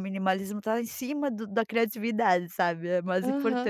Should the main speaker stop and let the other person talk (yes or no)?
yes